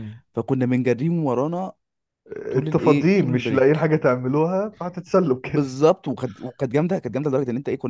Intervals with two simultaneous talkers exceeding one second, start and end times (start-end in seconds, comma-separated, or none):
2.5-3.9